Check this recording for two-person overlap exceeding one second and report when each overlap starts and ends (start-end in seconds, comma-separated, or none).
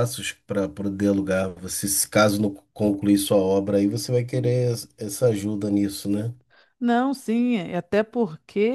none